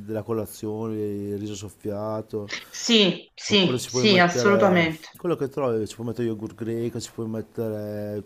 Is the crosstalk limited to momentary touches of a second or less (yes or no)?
no